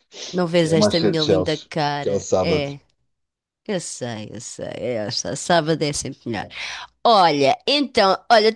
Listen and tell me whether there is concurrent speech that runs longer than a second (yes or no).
yes